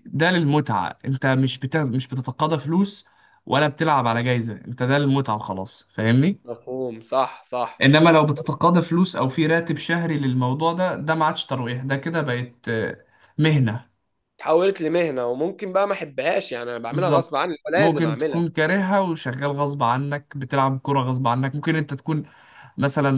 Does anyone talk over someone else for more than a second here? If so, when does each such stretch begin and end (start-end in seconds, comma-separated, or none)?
16.9-18.4